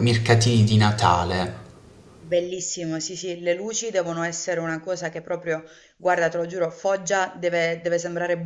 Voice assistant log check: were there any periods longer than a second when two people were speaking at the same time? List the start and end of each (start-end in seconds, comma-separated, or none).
none